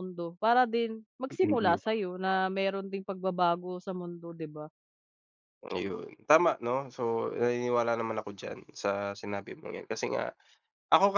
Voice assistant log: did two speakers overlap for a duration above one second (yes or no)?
no